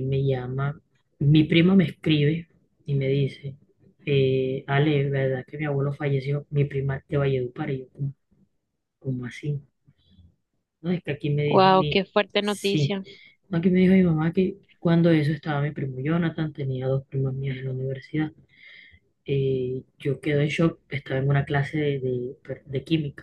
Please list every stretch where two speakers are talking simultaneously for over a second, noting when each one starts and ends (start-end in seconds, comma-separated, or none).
11.4-13.0